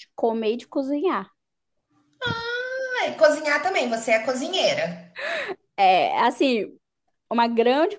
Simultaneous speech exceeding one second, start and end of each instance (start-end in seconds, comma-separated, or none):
none